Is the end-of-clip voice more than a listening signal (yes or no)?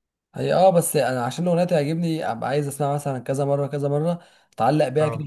no